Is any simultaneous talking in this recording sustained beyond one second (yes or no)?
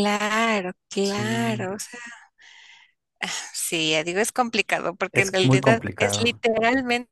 yes